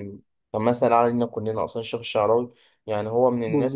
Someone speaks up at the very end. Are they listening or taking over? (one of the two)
listening